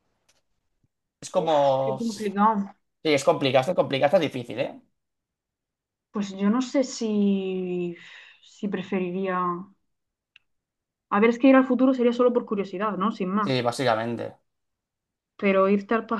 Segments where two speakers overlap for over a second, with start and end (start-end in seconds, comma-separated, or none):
1.3-2.7